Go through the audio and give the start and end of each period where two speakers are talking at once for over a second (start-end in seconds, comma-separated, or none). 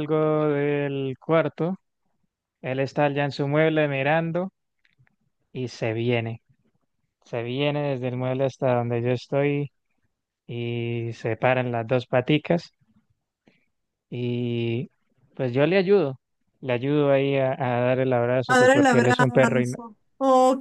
18.5-19.8